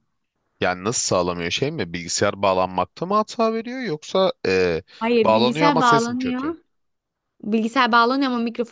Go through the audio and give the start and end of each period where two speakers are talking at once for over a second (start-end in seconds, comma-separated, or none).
5.2-6.5